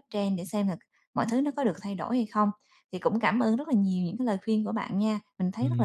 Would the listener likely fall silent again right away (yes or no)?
no